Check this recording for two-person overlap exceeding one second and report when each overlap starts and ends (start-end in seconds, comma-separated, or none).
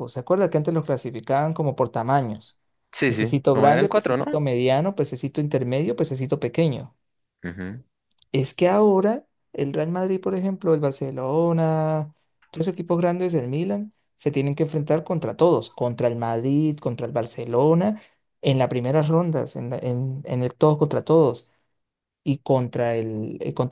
3.0-4.2